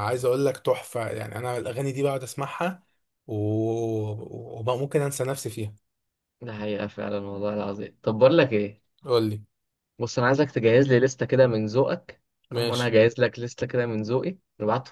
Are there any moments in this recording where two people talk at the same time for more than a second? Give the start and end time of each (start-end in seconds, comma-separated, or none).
none